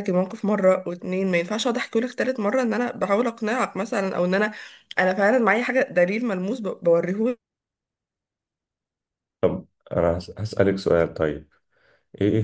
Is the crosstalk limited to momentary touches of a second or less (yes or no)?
yes